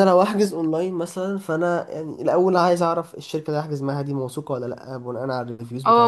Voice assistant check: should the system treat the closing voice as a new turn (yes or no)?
yes